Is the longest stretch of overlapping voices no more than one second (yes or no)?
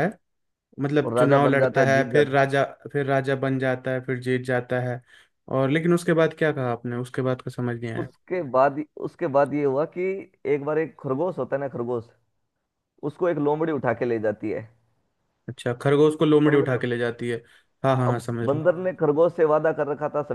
no